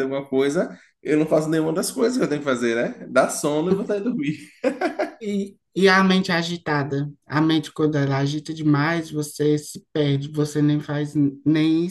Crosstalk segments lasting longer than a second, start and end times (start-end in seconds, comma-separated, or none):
none